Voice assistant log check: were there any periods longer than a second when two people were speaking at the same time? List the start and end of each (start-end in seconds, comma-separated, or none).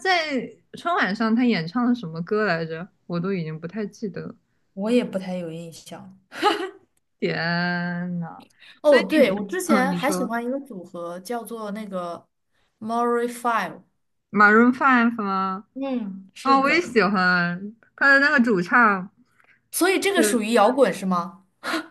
8.8-10.3